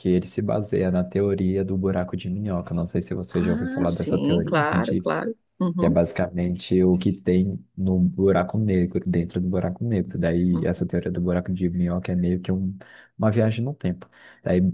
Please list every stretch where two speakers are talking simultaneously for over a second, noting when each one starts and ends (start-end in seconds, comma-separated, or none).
3.3-4.6